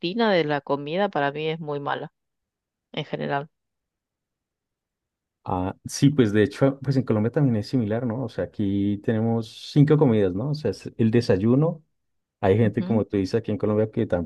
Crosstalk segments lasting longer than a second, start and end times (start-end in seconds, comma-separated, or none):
none